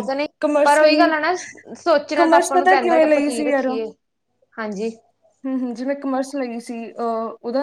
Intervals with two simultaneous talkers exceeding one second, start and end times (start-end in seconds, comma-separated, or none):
2.1-3.7